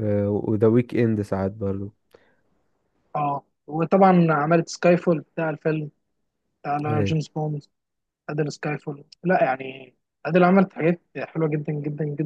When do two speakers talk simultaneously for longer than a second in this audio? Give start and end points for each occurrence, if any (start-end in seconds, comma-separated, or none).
none